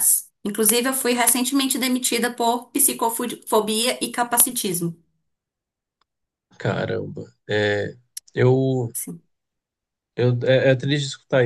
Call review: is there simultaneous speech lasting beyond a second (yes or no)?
no